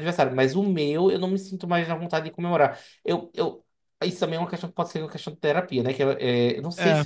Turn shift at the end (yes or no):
no